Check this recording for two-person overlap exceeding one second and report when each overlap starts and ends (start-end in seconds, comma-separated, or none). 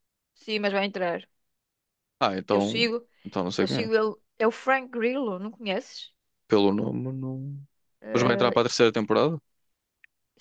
none